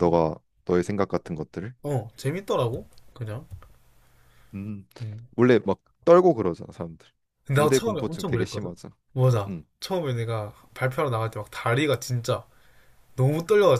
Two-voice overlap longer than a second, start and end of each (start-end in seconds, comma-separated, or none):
7.5-8.8